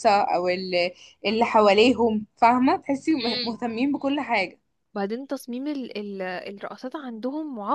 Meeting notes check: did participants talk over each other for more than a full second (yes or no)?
no